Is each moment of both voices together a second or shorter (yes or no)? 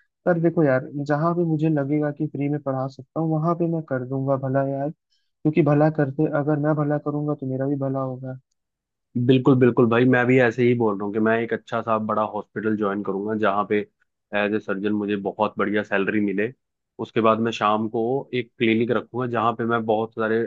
yes